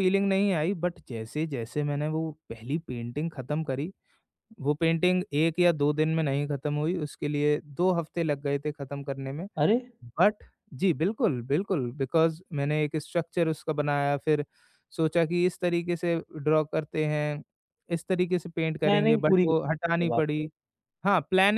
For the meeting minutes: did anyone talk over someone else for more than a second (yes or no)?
yes